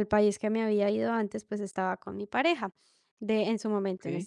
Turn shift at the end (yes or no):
no